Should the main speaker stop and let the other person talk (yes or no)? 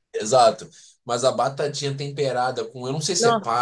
no